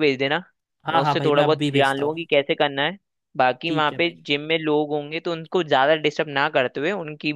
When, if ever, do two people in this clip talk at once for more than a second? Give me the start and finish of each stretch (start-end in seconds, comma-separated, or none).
0.9-2.2